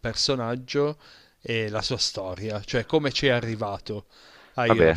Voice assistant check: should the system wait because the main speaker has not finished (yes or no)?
yes